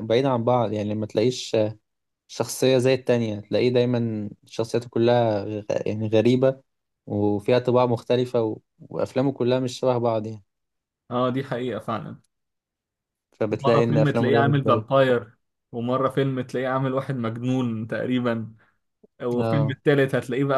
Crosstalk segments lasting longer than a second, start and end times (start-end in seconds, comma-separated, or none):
13.5-15.0